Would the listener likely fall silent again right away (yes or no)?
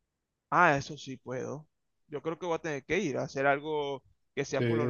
no